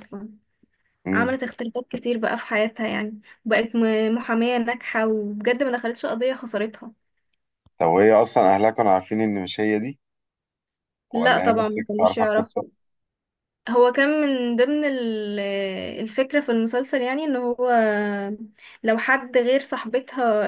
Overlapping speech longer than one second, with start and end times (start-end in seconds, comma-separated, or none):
11.2-12.6